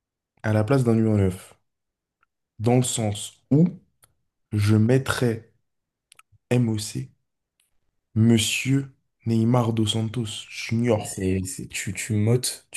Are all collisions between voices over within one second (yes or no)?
yes